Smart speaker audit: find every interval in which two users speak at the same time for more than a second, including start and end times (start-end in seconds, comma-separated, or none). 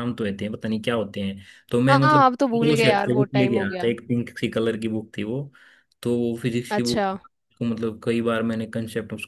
1.9-3.8